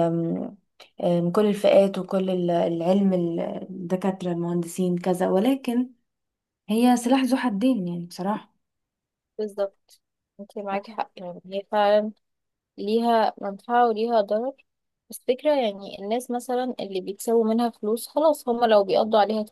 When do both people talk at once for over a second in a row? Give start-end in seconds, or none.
none